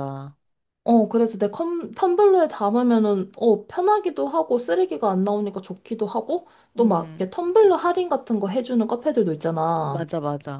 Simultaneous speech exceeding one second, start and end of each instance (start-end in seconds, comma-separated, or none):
none